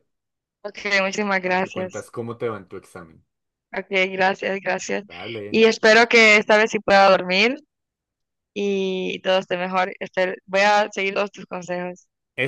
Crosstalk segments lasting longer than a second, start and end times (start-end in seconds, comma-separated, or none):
none